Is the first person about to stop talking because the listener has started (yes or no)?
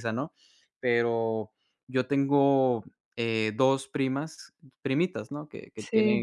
no